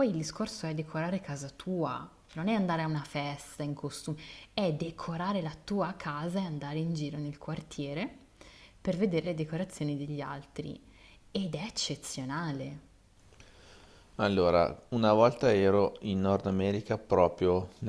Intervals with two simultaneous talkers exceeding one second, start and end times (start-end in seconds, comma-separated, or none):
none